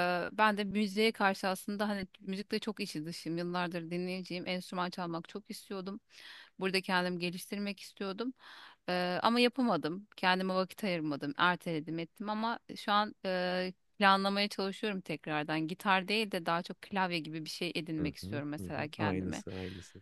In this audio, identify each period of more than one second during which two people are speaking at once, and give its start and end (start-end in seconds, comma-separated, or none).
18.0-19.4